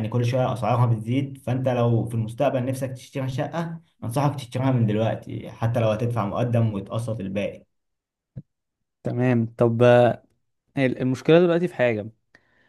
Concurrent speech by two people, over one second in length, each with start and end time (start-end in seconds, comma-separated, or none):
none